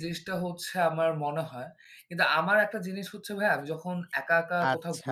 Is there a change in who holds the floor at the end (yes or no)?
no